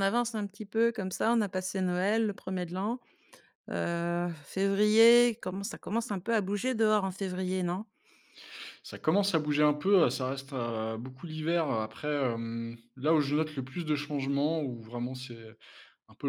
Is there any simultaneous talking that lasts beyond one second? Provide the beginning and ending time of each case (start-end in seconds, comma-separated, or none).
none